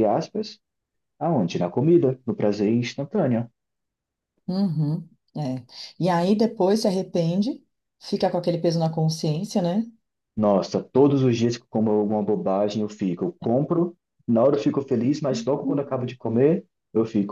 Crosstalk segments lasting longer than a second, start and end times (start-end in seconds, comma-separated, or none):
none